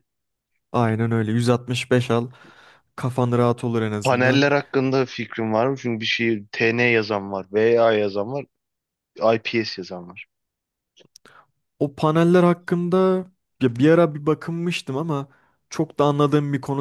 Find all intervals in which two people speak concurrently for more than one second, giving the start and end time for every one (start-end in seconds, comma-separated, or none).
none